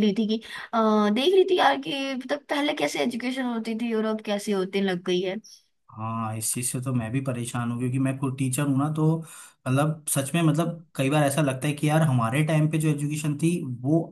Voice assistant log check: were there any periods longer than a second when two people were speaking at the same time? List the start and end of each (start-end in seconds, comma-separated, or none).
none